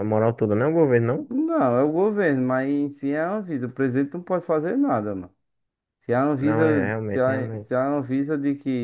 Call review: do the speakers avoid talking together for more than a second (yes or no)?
no